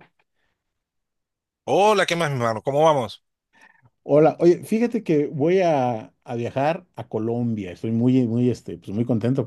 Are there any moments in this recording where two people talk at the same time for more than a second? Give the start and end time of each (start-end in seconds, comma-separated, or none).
none